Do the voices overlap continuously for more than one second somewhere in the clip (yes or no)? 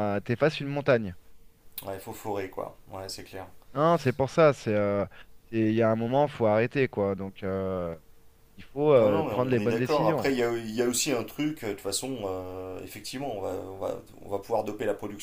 yes